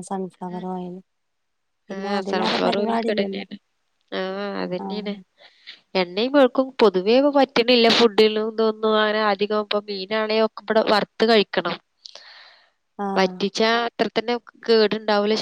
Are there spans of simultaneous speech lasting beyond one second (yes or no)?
yes